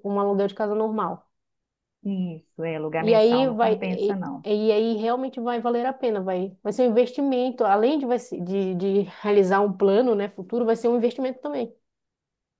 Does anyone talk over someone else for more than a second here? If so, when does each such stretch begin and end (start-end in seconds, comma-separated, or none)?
3.0-4.5